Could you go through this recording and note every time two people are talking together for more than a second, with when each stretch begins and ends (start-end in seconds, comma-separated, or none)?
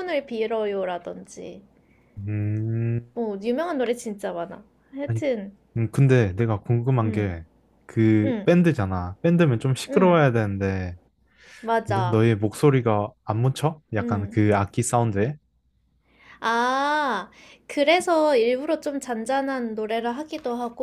none